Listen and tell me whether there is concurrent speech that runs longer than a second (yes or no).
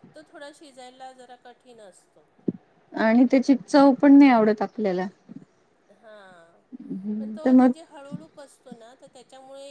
no